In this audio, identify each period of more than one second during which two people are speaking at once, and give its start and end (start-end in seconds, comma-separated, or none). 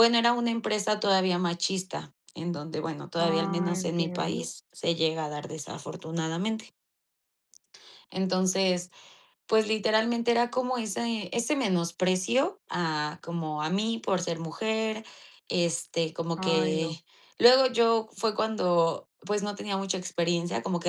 3.2-4.5